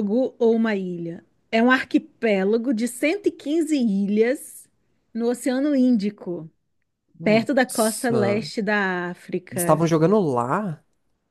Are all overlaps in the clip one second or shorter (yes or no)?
no